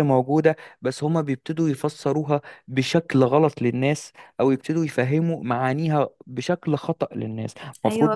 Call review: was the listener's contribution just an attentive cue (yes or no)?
no